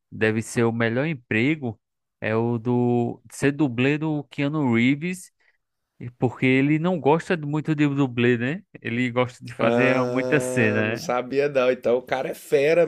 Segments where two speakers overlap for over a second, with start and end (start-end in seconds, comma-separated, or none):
9.6-11.1